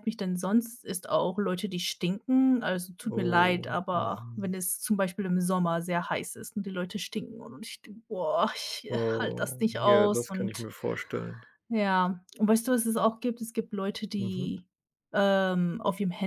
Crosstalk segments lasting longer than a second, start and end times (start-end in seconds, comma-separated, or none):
3.1-4.5, 8.9-10.7